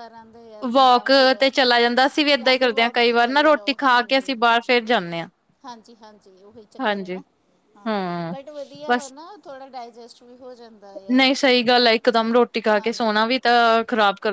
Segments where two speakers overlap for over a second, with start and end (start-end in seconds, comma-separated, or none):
2.4-4.3